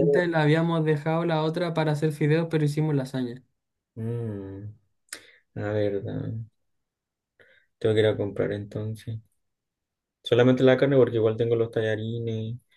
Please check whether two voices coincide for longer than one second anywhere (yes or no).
no